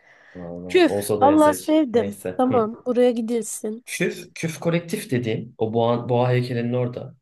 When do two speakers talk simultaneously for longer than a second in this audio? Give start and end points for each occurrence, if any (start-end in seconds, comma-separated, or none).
0.7-2.7